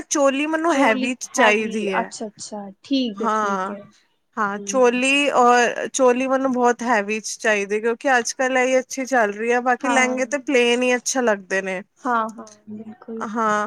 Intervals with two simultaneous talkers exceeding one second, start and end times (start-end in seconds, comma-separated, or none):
0.7-2.1